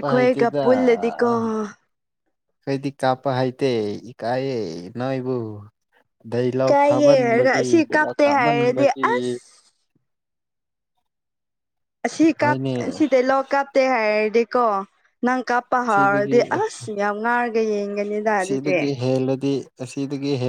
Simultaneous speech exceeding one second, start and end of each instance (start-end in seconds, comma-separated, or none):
6.7-9.0